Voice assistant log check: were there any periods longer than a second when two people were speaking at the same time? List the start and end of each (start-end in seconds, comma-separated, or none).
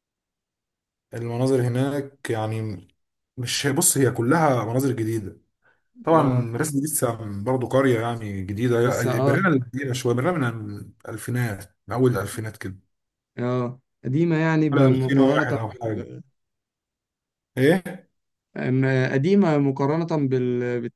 14.7-16.1